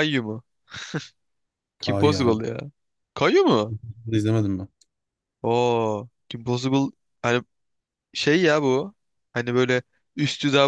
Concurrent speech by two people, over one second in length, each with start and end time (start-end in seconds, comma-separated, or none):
none